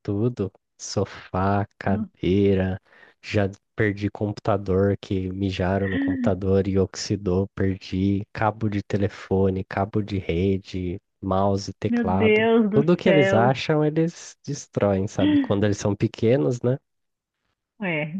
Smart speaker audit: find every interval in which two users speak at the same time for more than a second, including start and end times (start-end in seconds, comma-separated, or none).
11.9-13.6